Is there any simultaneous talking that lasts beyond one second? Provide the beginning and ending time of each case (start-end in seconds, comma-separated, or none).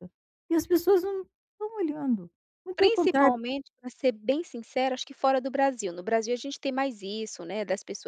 none